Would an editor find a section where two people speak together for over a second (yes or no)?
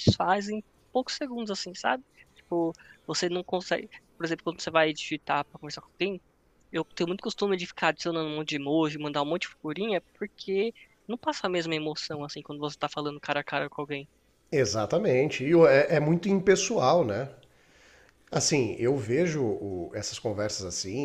no